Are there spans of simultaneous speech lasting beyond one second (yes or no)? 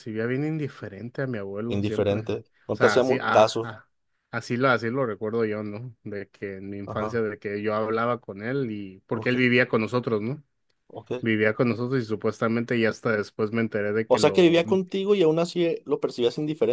yes